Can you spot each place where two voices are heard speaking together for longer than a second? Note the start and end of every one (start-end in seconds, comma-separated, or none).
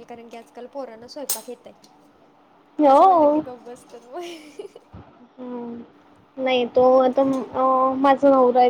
none